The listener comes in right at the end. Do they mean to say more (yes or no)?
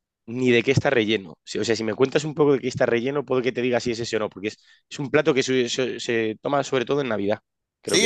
yes